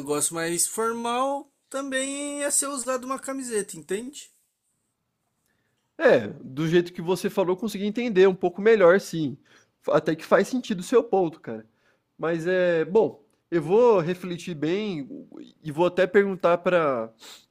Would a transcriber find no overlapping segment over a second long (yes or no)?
yes